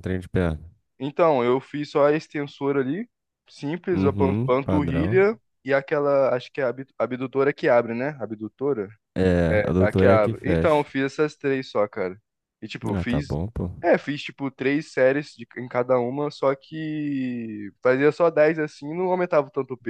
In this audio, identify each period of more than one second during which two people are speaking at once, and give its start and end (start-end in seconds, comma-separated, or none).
3.9-5.2, 9.5-10.9